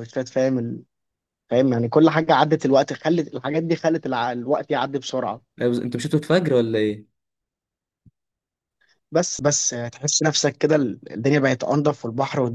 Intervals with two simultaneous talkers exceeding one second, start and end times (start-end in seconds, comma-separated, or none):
none